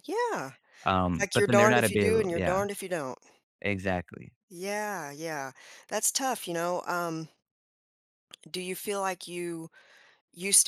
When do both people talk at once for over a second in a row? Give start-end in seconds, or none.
1.2-2.7